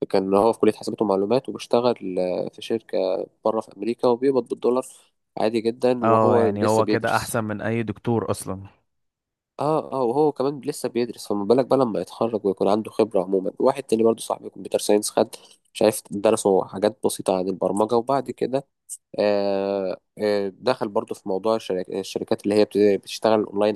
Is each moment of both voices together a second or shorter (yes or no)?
no